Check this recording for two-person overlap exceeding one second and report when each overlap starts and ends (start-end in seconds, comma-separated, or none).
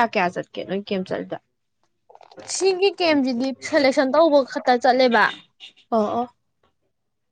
none